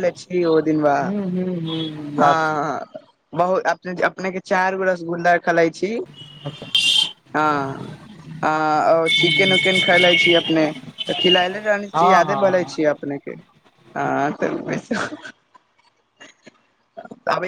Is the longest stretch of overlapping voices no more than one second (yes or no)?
yes